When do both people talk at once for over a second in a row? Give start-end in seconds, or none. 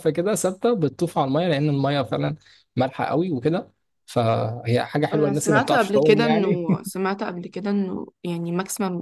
5.1-6.6